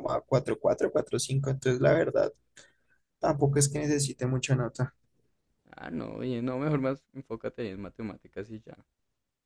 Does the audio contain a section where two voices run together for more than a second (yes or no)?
no